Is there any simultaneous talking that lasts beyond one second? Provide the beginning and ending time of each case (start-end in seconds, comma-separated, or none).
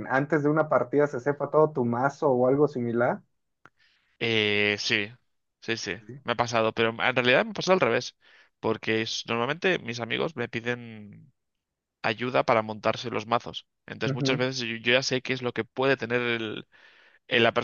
none